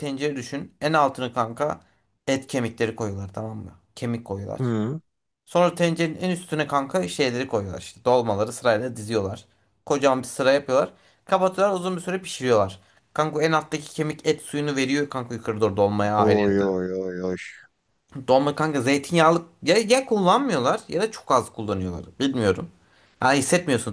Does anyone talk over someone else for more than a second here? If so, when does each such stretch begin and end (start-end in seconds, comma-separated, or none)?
none